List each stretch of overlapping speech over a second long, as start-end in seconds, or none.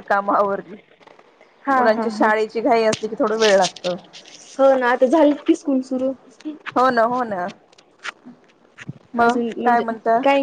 none